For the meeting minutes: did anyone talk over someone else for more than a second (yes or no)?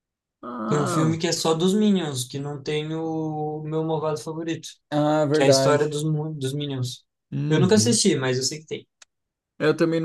no